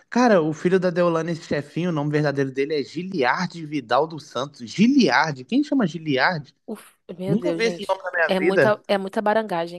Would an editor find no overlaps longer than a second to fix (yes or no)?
no